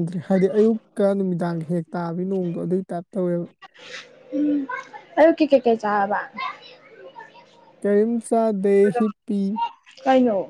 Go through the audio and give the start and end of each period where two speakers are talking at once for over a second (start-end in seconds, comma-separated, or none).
none